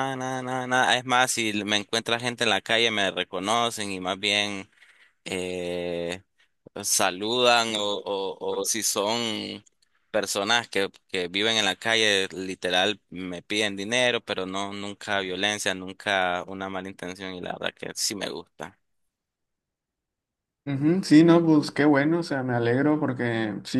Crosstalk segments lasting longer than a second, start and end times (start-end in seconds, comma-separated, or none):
none